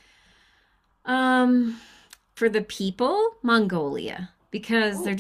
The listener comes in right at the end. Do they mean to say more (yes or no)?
no